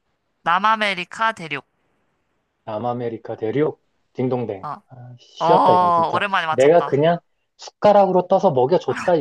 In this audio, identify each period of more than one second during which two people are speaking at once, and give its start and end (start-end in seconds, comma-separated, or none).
5.5-7.0